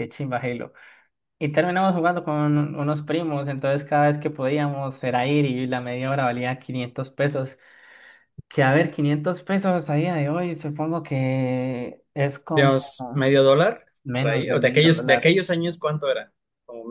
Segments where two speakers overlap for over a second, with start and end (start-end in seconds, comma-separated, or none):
14.0-15.3